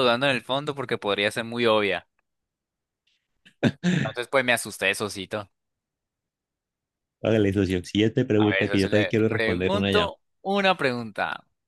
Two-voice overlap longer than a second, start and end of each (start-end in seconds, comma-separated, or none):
8.4-10.1